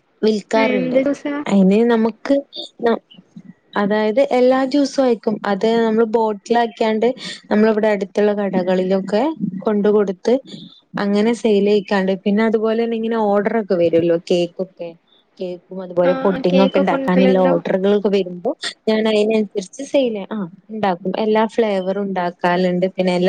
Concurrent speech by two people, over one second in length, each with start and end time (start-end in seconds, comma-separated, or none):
16.1-17.5